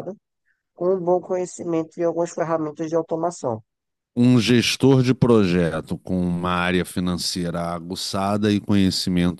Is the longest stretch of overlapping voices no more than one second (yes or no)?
yes